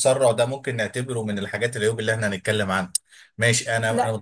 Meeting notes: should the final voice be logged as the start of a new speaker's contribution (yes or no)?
no